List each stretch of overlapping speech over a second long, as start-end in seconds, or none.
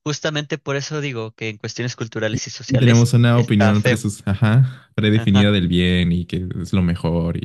2.3-4.0